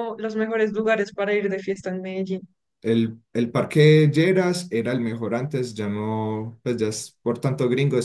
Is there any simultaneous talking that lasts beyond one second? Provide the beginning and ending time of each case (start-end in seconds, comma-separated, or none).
none